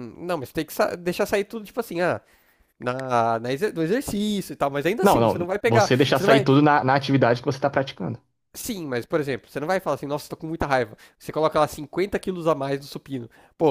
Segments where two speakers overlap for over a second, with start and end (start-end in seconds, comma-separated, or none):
5.0-6.5